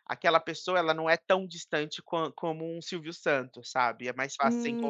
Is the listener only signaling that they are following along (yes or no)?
no